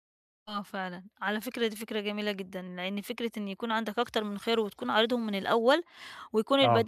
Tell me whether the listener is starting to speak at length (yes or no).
no